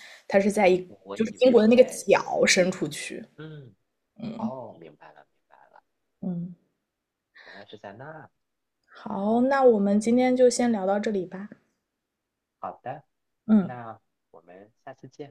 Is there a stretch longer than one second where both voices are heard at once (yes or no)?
yes